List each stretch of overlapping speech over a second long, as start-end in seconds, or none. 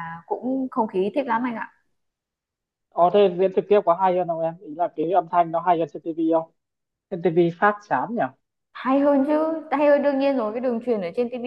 none